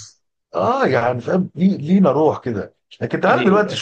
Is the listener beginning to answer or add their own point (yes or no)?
no